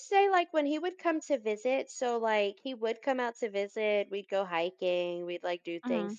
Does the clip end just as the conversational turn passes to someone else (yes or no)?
no